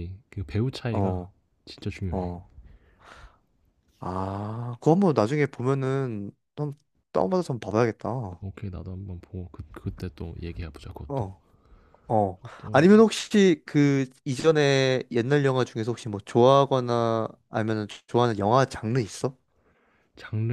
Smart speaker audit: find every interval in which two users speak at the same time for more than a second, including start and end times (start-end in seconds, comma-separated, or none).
none